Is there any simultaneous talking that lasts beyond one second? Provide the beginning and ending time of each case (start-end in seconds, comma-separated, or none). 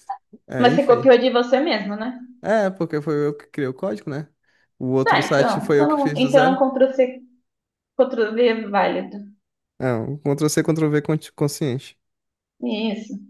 5.0-6.7